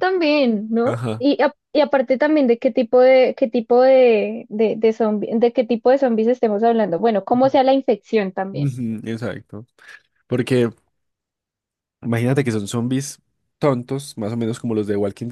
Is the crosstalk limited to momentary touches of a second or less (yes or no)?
yes